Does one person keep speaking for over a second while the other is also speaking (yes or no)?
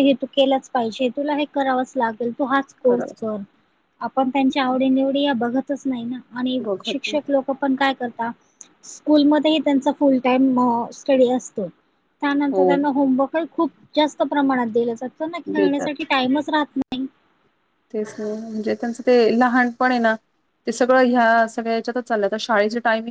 no